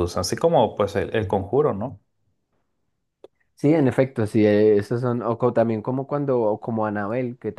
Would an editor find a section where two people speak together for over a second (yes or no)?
no